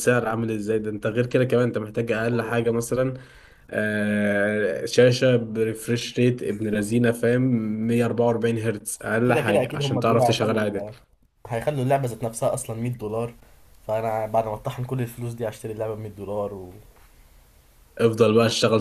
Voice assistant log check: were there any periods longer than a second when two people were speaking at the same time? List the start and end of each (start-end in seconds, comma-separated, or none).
9.3-10.8